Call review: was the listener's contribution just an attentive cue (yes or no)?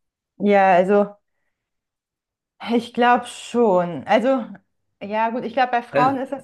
yes